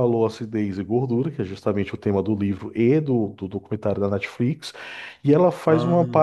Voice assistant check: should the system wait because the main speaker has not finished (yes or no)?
yes